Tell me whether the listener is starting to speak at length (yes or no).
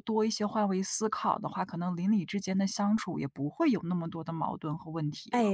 yes